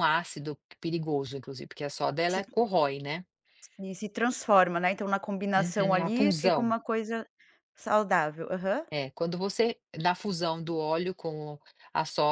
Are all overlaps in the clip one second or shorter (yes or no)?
no